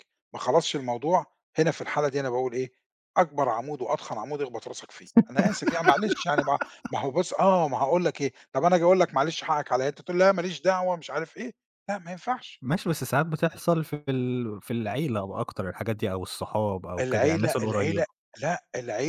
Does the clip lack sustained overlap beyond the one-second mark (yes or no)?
no